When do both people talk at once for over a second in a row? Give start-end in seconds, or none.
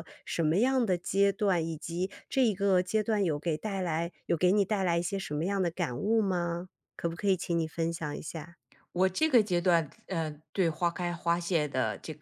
none